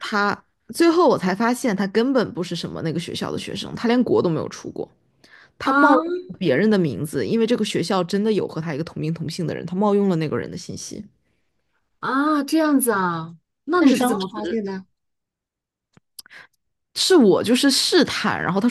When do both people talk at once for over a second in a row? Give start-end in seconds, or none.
none